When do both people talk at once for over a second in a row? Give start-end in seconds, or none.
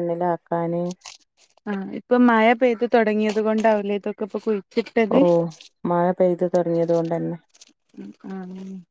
none